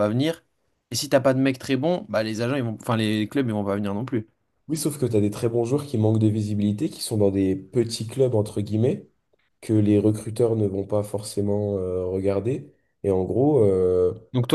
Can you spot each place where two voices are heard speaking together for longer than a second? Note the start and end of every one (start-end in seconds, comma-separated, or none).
none